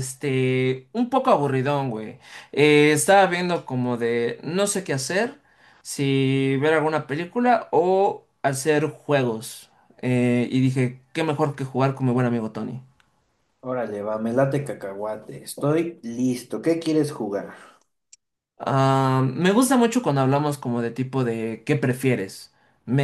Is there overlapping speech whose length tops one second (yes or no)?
no